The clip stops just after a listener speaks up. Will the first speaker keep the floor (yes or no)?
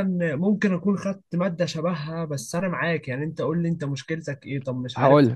yes